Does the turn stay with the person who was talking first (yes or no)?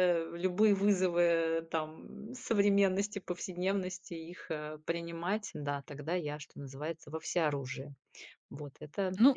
no